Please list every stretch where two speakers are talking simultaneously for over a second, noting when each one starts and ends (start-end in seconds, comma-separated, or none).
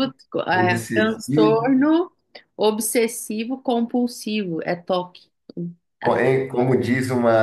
0.5-1.7